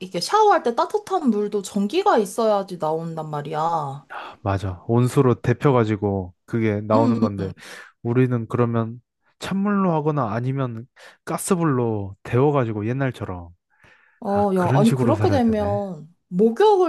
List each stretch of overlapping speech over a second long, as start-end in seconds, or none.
14.3-15.8